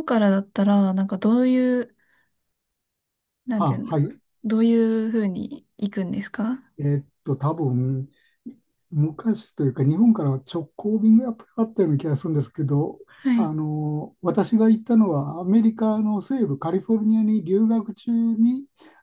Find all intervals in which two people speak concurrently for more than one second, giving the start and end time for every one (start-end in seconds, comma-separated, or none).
none